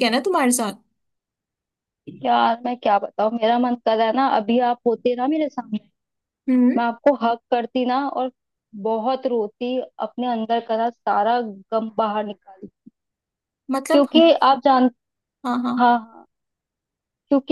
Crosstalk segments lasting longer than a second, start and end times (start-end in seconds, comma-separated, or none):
none